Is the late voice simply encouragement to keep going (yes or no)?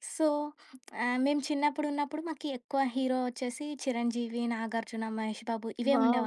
no